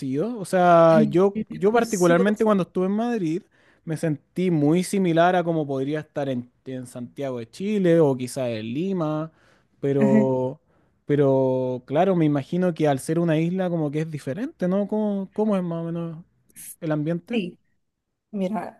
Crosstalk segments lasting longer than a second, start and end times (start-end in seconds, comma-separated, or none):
0.9-2.6